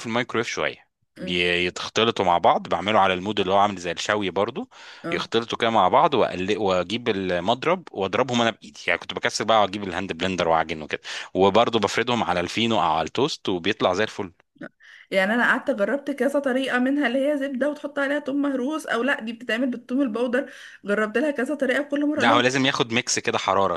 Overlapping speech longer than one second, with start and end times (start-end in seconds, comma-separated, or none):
none